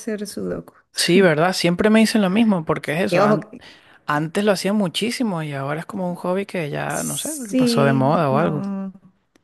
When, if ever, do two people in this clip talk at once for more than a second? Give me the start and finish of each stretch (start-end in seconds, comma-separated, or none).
6.9-8.6